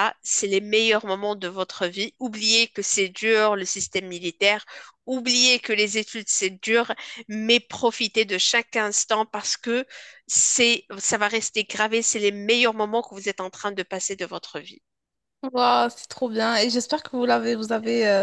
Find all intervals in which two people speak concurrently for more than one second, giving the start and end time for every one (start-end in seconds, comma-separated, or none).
none